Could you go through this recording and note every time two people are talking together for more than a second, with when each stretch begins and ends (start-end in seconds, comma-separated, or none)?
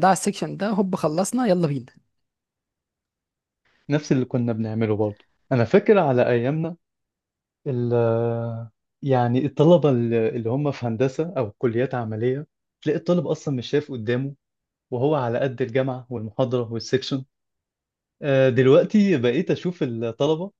none